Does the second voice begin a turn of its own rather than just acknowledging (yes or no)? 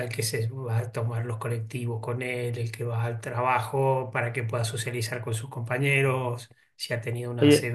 yes